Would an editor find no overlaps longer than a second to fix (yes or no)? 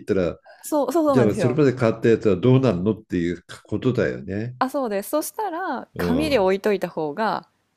yes